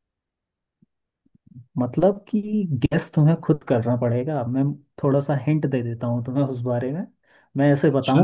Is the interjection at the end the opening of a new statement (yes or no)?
no